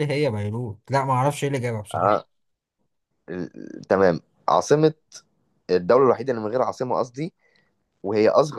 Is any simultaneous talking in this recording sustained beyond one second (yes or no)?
no